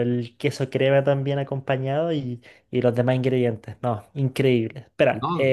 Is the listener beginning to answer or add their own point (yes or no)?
no